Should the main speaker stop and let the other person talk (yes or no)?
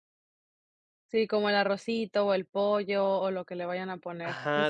yes